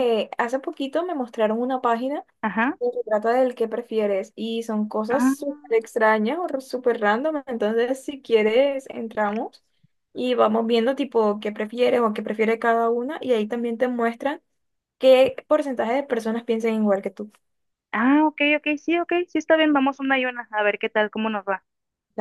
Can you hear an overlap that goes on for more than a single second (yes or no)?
no